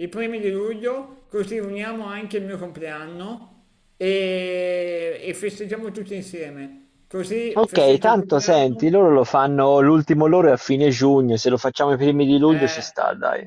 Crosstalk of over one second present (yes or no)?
yes